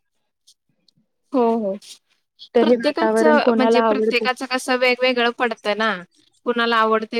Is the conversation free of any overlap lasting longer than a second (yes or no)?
no